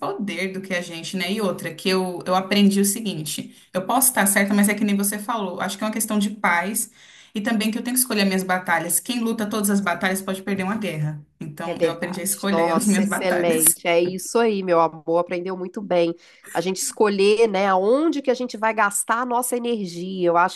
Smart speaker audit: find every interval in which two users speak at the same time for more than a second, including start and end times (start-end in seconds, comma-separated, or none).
11.7-13.6